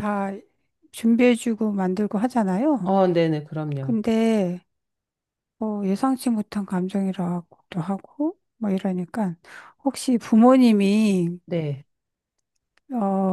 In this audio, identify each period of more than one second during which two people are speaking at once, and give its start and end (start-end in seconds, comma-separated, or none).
none